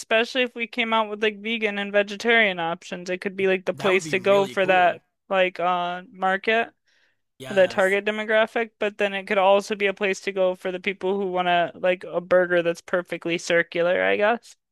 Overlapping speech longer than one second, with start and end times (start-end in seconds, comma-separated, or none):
3.7-5.0